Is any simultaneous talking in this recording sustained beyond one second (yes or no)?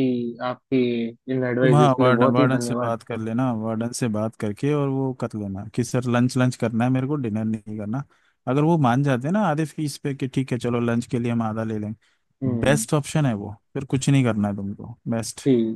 yes